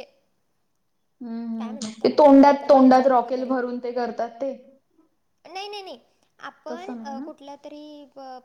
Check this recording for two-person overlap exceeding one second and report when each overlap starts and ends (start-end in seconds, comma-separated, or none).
1.6-3.5